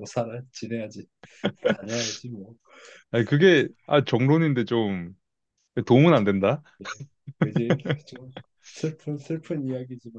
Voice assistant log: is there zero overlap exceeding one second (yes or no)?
yes